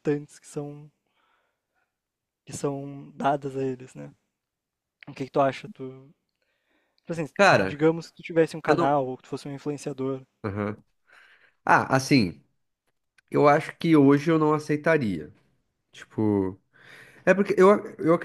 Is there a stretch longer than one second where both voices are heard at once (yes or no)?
no